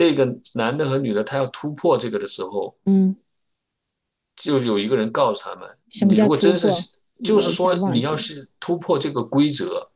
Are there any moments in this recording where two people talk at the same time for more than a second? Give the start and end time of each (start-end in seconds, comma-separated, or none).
5.9-8.2